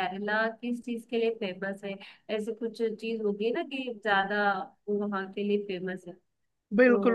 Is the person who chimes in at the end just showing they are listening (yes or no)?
no